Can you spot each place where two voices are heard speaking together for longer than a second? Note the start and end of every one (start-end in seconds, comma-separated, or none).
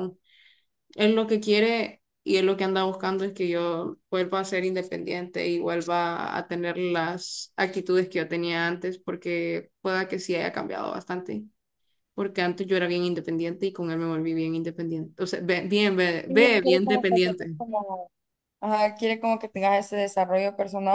16.3-17.5